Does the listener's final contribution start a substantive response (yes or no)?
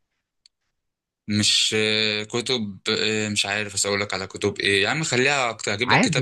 no